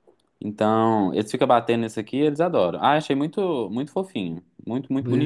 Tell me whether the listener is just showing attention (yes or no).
no